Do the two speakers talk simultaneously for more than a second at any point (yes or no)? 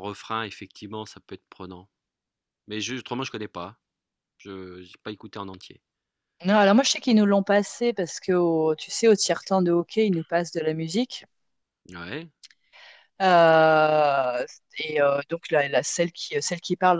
no